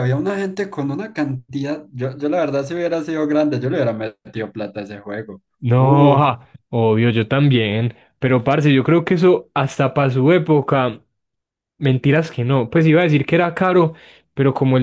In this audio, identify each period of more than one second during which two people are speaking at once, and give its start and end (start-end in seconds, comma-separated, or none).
none